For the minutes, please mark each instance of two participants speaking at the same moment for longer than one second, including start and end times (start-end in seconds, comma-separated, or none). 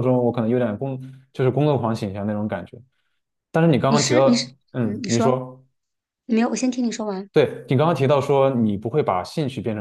3.9-5.4